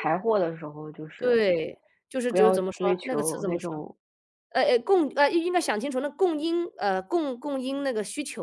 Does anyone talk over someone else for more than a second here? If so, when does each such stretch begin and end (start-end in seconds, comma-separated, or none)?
2.3-3.7